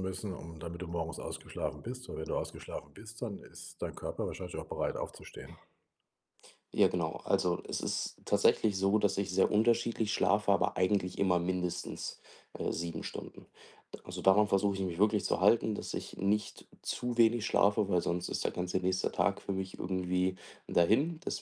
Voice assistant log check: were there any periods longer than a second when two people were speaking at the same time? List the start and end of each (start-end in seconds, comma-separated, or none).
none